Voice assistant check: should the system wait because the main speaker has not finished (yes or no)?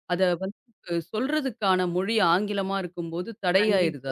no